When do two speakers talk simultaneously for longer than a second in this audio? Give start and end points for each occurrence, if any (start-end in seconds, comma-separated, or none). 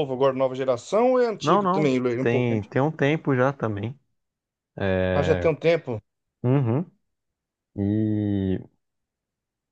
1.4-2.7